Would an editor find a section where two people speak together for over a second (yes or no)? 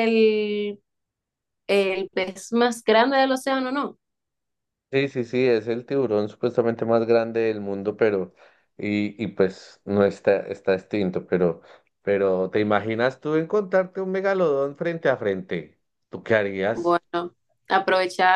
no